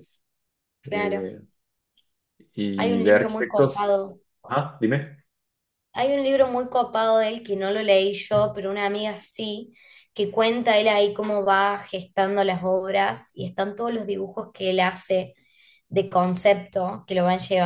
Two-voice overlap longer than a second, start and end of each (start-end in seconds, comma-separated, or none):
2.8-4.2